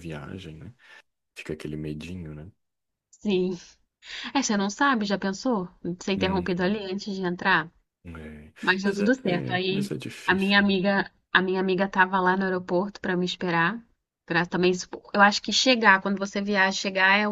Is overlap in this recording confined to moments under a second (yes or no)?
no